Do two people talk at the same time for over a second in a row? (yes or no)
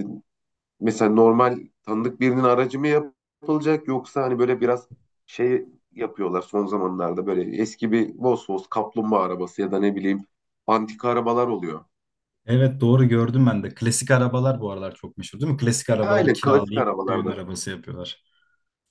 yes